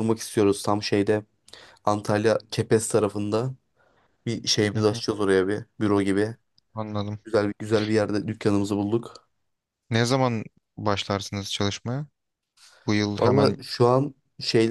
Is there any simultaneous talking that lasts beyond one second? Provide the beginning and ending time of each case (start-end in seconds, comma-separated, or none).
none